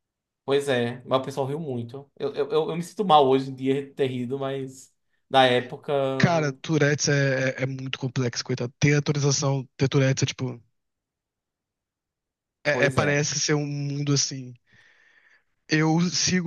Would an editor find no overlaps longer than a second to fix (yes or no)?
yes